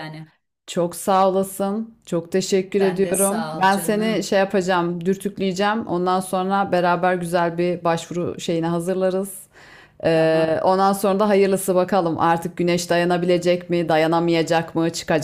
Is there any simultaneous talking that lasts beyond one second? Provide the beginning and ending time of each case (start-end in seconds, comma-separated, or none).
2.8-4.3